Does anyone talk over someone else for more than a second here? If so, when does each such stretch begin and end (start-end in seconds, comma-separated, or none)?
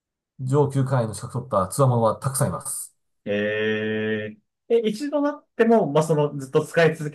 none